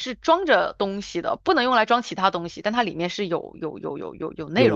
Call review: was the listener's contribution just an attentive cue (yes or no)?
no